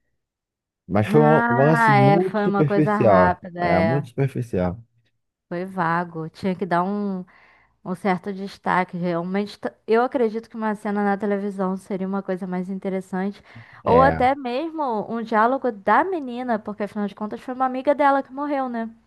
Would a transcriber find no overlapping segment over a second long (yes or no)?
no